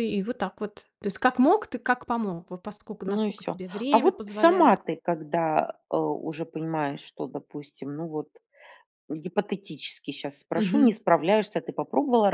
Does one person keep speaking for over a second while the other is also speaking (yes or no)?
yes